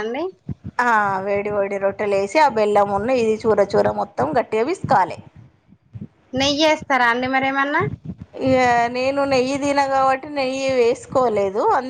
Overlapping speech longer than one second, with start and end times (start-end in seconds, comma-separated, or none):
none